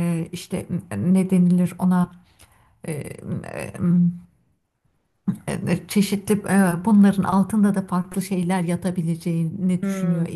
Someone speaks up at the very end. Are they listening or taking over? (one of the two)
taking over